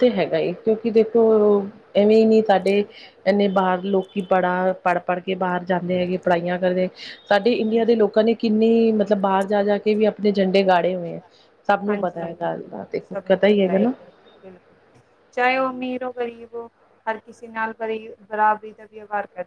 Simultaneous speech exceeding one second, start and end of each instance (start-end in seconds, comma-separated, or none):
11.9-13.8